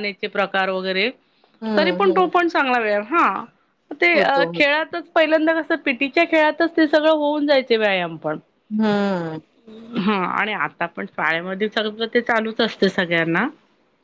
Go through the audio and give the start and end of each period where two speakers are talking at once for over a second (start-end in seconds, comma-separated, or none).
none